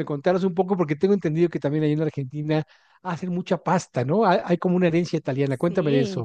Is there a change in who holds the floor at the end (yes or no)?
yes